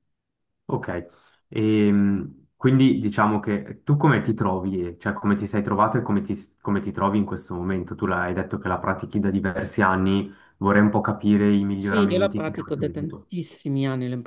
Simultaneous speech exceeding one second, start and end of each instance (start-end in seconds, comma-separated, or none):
11.8-13.3